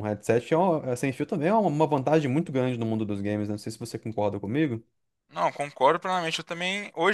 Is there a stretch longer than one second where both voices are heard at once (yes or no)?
no